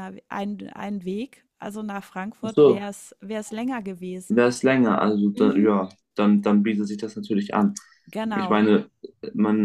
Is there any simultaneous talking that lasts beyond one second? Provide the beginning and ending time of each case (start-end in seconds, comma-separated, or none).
none